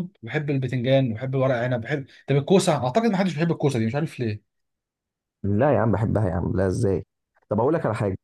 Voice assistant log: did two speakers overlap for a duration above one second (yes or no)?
no